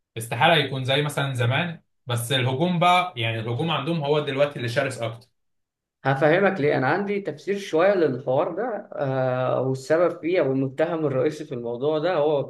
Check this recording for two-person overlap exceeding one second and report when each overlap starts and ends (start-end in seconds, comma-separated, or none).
none